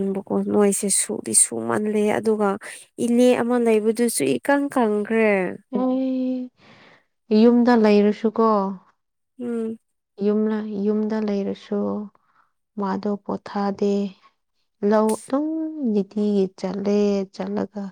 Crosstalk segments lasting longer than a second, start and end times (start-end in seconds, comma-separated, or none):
none